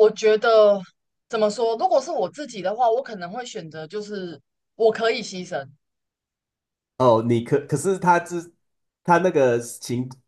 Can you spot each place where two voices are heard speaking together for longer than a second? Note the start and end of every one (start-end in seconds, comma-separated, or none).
none